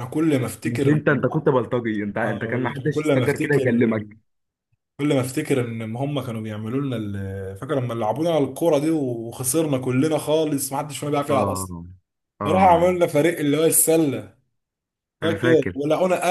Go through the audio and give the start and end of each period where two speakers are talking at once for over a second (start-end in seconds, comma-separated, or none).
2.2-3.6